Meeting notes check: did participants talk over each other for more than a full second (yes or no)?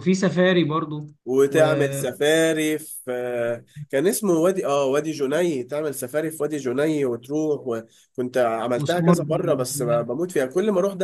yes